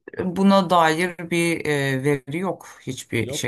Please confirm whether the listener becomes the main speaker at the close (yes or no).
no